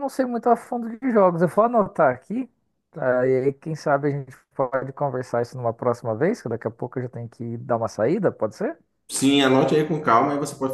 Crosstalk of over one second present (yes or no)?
no